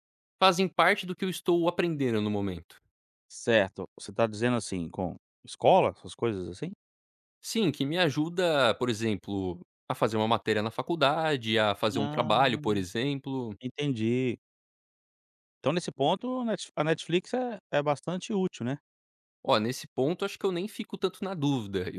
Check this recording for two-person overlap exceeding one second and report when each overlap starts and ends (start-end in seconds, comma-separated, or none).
none